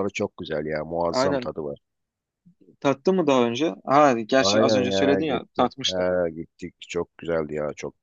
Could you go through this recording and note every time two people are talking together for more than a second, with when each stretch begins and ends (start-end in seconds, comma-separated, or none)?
4.4-6.0